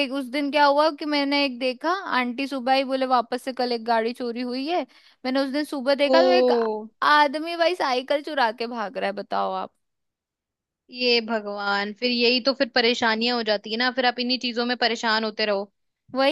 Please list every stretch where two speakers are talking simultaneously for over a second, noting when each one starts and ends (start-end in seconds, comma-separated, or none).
none